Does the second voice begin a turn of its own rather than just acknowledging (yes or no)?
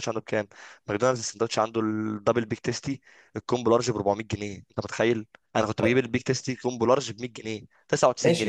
yes